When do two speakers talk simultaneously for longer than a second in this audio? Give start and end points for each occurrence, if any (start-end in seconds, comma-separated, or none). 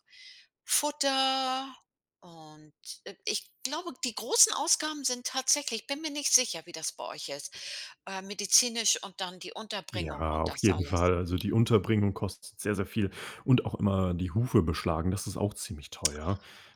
9.9-11.1